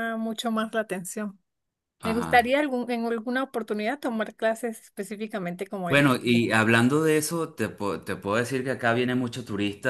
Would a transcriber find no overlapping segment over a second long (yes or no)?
yes